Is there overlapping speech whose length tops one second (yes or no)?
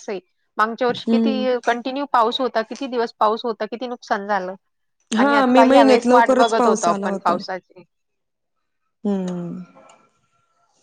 yes